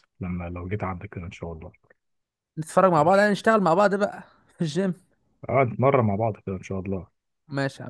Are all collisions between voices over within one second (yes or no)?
yes